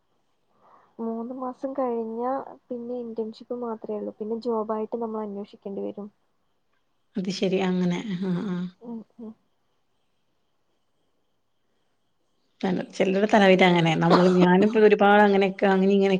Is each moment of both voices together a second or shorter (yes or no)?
yes